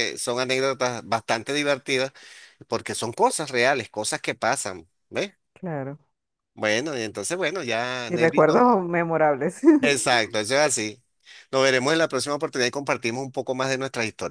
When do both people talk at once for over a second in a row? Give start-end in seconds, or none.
none